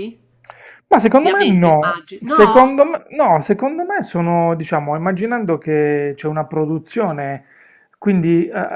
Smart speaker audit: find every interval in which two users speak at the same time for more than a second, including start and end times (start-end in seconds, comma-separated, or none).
1.1-2.7